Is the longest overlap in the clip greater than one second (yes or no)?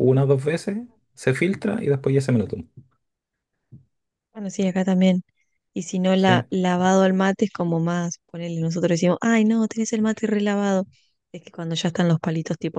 no